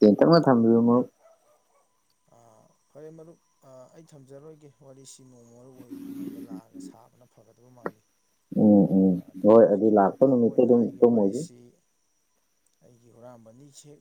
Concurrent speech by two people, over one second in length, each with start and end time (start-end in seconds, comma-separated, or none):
9.1-11.4